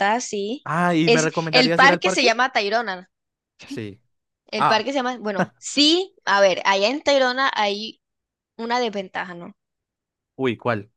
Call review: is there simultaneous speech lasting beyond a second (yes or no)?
yes